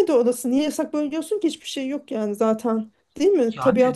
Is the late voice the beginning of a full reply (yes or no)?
no